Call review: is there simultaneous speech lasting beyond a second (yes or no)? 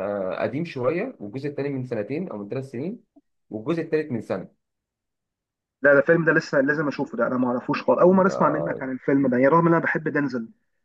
no